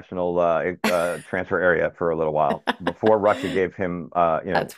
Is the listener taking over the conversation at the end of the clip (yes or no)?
no